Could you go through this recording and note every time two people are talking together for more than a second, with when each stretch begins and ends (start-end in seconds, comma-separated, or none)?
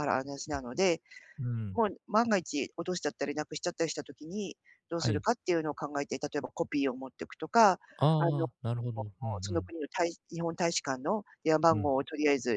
none